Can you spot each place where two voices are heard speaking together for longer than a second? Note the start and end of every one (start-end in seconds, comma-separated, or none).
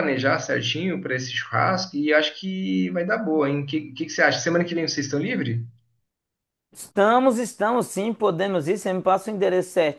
none